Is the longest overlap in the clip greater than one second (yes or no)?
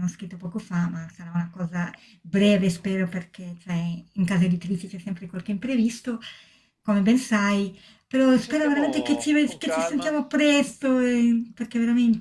yes